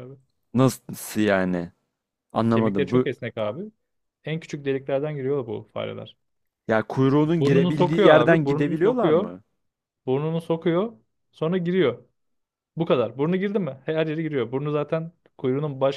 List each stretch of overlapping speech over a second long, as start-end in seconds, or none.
7.4-9.3